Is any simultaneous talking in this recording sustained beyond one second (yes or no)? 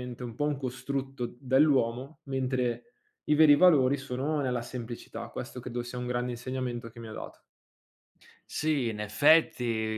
no